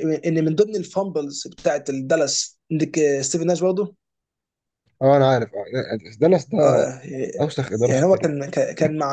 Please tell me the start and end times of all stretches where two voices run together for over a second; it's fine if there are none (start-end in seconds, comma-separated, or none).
none